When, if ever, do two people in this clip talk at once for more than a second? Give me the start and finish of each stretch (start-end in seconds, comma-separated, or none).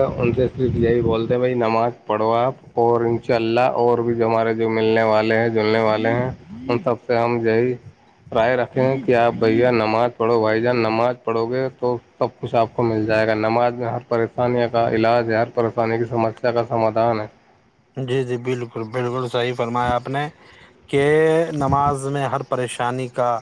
none